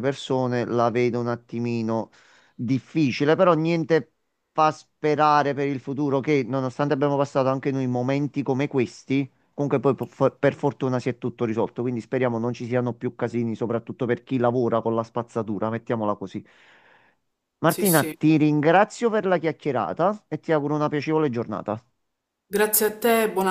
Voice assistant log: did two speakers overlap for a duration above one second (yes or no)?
no